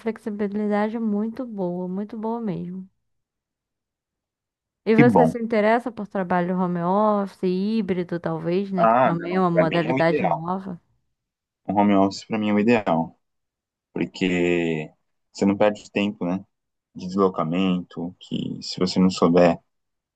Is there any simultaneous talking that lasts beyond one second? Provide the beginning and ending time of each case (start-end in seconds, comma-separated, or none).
8.8-10.4